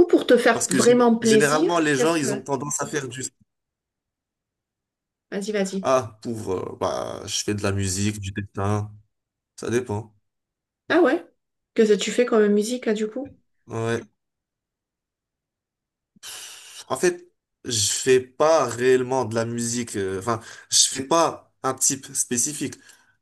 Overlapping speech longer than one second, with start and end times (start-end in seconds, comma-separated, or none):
0.5-2.4